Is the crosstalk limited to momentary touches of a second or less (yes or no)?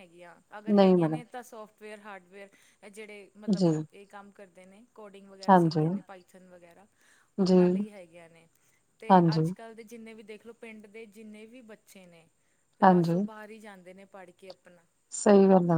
yes